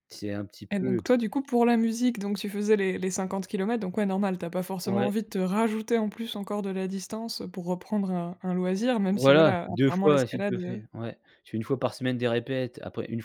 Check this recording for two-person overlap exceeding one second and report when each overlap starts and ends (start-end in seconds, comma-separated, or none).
9.1-10.8